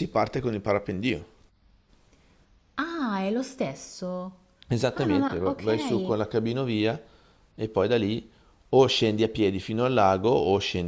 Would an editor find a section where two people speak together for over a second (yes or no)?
yes